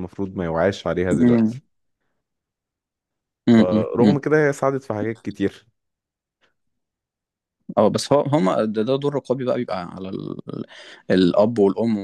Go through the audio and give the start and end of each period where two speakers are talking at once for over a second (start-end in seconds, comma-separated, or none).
none